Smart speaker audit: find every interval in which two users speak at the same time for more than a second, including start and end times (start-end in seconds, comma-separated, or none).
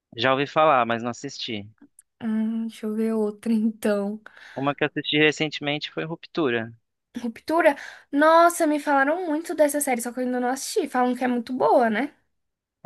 none